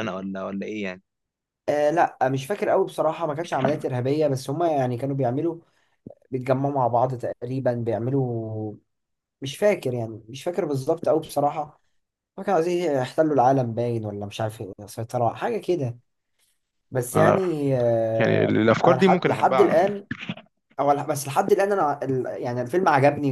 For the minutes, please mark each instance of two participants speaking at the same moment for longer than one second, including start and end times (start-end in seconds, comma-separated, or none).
18.2-20.0